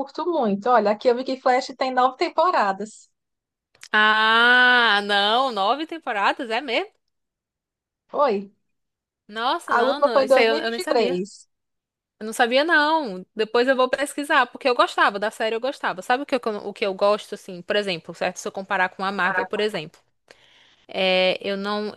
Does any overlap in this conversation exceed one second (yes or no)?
yes